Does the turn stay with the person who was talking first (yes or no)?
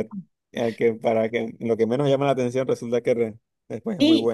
no